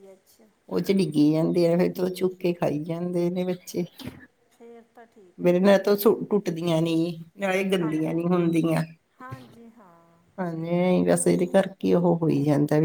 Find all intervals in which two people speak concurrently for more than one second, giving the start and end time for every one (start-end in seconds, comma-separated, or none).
none